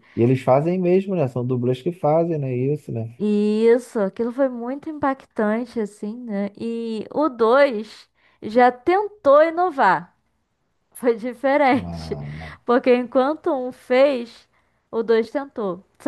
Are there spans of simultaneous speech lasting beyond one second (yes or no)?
no